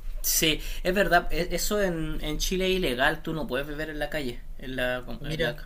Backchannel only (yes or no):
yes